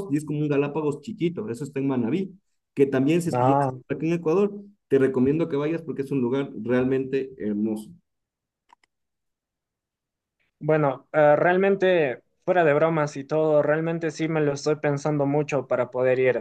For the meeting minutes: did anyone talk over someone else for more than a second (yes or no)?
no